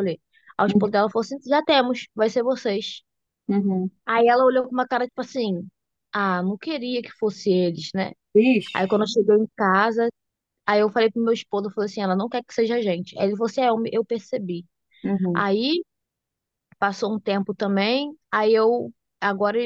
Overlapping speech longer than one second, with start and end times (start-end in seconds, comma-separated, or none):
none